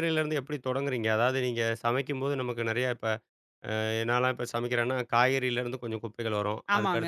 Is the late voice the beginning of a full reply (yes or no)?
no